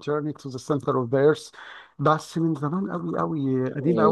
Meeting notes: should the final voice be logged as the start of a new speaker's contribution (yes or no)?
yes